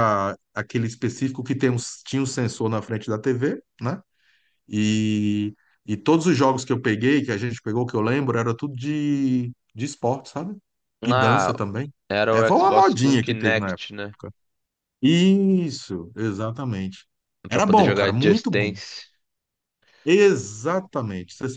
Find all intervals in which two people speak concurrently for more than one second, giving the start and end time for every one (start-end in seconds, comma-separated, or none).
12.3-14.2, 17.5-18.7